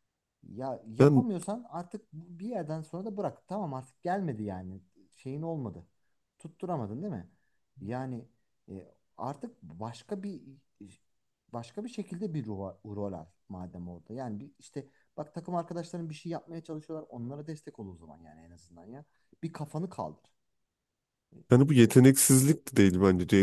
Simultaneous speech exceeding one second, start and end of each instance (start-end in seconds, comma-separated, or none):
none